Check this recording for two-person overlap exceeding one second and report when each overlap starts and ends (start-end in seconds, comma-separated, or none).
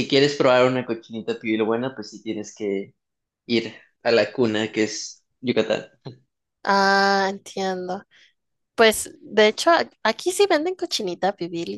none